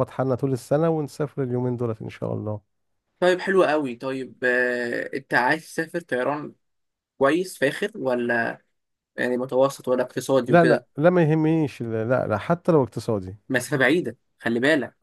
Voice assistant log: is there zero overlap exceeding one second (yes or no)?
yes